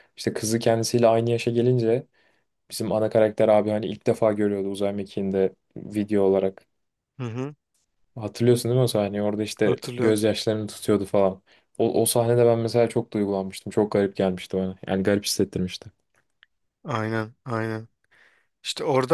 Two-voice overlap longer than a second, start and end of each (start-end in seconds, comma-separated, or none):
none